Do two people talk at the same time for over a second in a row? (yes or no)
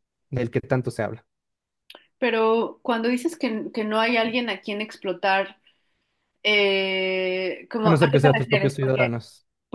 yes